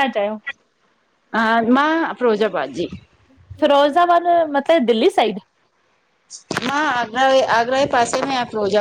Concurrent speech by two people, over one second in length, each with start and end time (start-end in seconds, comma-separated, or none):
none